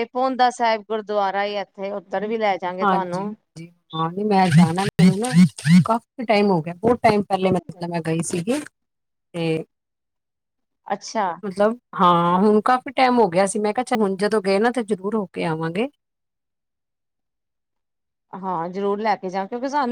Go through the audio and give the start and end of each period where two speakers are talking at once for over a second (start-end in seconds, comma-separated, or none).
none